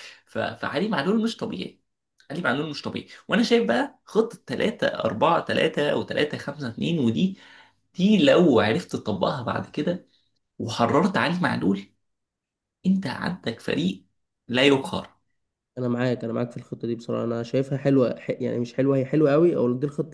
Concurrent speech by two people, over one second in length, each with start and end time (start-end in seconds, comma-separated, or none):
none